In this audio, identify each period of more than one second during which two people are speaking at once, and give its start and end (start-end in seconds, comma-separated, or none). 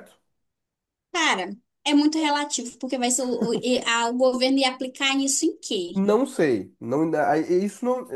none